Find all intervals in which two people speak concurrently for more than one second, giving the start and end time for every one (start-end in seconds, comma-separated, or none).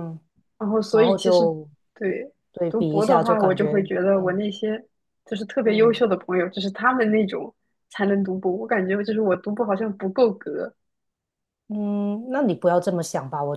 2.7-4.4